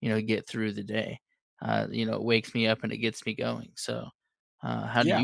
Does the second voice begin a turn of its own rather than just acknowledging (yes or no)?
yes